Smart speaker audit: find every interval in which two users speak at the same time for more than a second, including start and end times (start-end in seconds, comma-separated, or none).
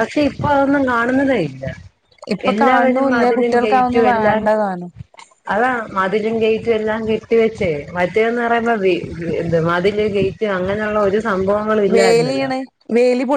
2.5-4.4